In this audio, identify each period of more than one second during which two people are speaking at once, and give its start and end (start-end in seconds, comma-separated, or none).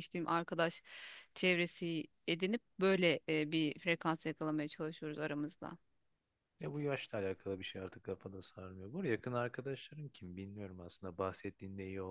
none